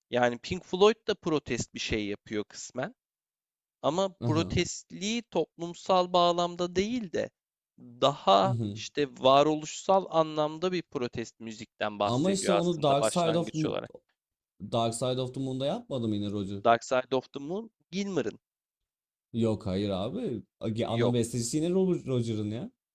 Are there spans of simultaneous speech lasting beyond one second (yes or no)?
yes